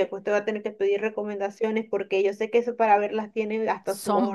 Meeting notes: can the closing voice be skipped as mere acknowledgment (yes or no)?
no